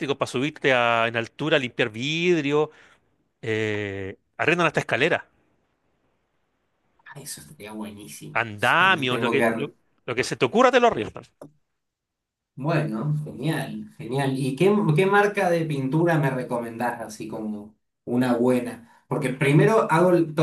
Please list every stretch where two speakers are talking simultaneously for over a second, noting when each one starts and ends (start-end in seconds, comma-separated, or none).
8.3-9.7